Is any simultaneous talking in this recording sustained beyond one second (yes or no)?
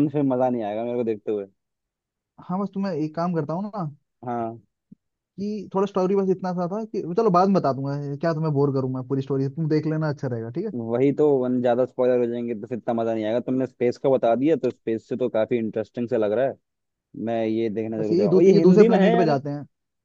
yes